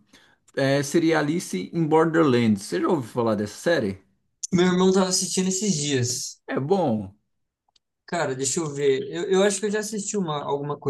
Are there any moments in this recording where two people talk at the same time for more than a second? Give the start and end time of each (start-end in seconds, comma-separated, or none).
none